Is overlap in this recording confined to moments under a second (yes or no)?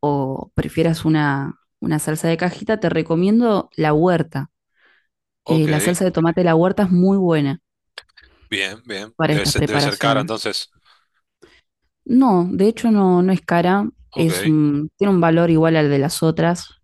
no